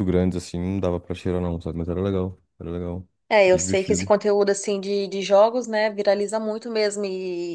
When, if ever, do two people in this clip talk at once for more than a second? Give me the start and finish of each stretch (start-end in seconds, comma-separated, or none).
none